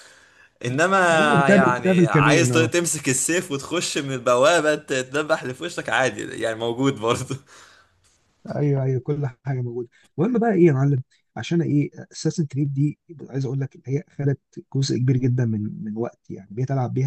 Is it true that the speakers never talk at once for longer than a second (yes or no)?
no